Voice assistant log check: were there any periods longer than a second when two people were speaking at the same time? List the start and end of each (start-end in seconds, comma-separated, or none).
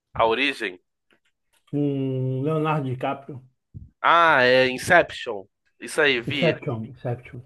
none